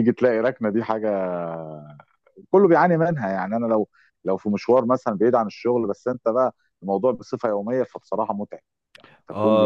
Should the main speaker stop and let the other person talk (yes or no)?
yes